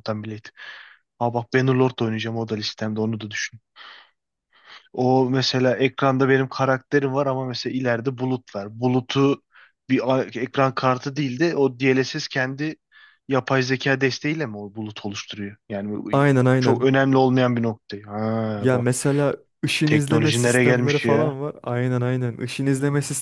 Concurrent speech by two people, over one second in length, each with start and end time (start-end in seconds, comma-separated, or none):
19.8-21.3